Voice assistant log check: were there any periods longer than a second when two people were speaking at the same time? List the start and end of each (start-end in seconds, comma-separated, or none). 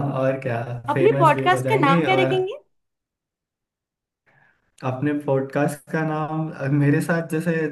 0.9-2.4